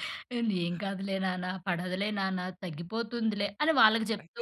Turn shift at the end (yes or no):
yes